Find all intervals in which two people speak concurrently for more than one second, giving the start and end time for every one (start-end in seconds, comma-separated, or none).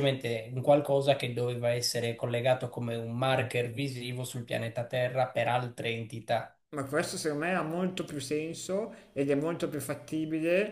none